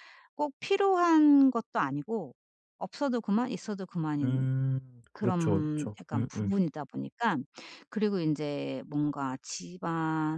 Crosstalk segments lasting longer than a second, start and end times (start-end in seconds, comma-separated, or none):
5.1-6.5